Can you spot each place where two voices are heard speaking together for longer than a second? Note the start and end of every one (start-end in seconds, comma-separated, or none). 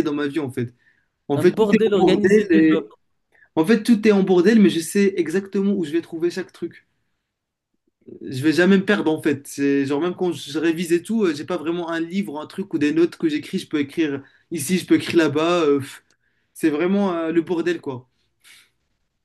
1.4-2.9